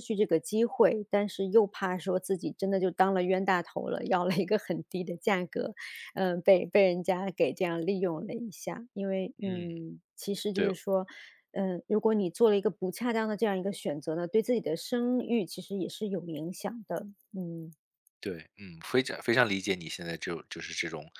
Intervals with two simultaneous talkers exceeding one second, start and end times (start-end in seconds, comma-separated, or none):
none